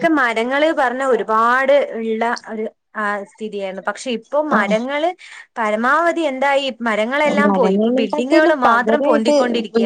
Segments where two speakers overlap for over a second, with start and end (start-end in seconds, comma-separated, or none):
7.5-9.3